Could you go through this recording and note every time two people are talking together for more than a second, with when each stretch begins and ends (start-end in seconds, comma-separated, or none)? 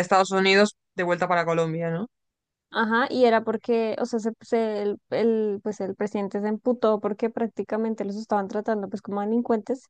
none